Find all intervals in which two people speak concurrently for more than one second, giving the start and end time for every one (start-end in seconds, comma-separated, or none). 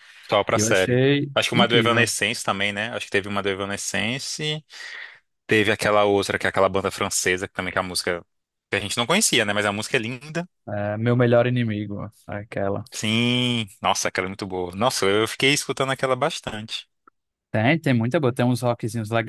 0.5-2.1